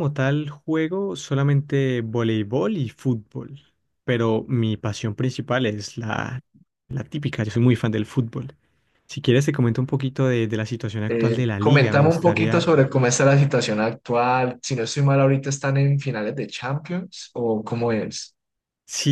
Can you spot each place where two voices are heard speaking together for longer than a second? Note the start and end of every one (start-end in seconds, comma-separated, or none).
11.1-12.7